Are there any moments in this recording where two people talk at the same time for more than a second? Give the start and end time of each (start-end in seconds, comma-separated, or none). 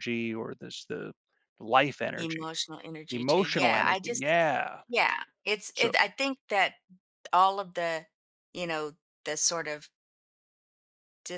3.1-4.3